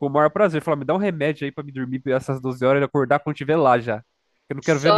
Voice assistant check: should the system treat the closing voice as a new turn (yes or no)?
yes